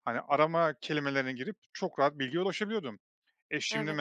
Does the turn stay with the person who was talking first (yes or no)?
yes